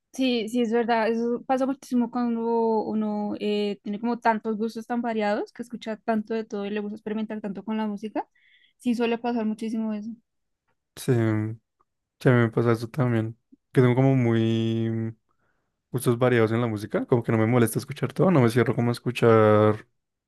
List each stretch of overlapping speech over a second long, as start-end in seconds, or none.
none